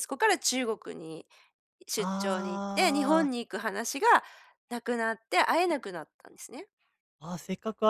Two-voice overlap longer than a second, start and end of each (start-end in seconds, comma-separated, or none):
2.0-3.3